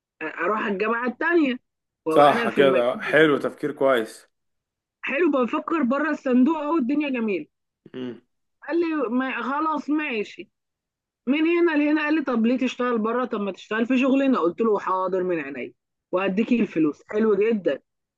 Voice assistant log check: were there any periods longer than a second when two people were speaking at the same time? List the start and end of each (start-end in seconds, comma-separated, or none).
2.1-3.4